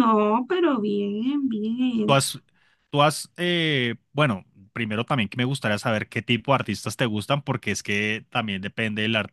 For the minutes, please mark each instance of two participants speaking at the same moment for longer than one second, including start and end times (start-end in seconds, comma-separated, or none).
none